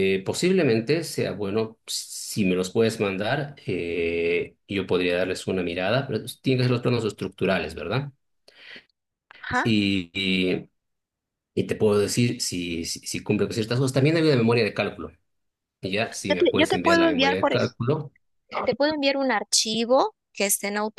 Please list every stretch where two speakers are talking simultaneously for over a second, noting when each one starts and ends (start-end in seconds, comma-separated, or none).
16.3-17.7